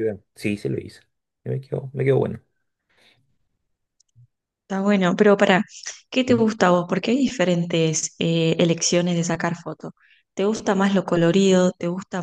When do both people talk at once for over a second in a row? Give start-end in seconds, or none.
none